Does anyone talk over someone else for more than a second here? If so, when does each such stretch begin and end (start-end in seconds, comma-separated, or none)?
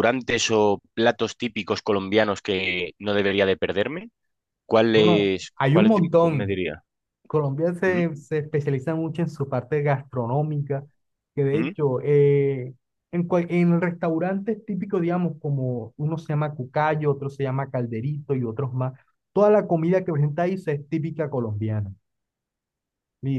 4.9-6.6